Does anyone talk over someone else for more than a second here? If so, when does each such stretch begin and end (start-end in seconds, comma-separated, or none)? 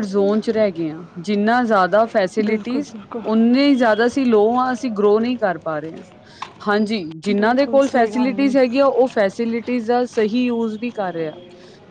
7.3-8.5